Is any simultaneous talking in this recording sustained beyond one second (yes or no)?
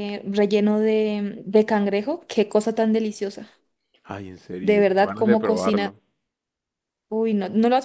yes